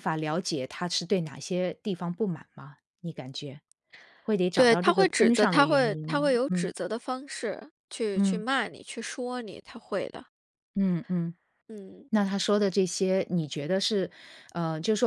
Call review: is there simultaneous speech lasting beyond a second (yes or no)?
yes